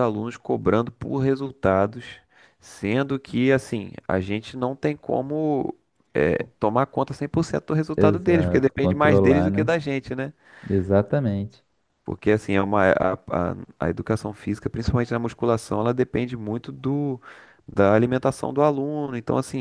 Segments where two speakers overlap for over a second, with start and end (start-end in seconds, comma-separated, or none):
8.0-9.8